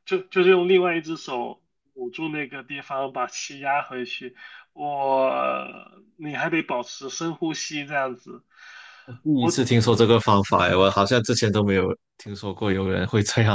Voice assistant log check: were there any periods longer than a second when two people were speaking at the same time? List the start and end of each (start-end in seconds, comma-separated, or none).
none